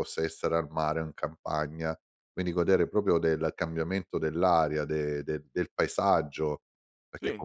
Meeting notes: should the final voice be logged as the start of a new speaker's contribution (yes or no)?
no